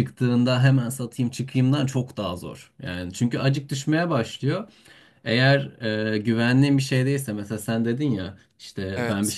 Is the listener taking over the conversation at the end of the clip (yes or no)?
no